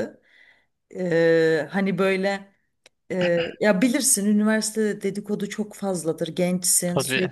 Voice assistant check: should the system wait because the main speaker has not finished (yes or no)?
yes